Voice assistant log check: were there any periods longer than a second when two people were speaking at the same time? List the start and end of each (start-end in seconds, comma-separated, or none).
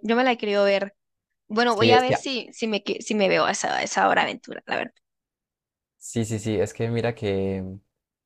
none